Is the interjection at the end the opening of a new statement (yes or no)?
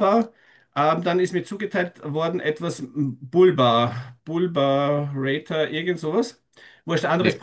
no